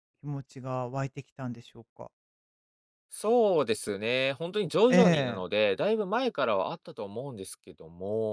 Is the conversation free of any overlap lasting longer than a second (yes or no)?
yes